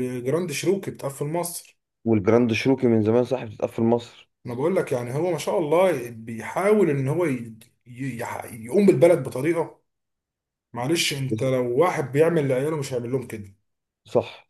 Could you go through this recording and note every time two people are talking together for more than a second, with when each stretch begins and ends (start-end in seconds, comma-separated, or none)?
none